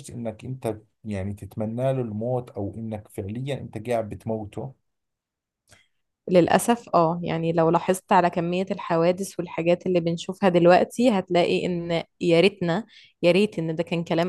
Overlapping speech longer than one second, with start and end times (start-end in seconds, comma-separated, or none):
none